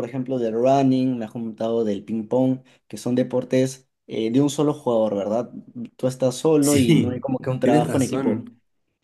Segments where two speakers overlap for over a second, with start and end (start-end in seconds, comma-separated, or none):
6.6-8.4